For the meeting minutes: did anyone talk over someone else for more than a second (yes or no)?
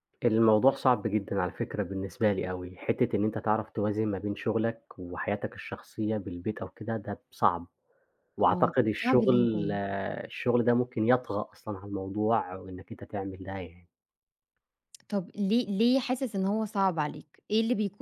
yes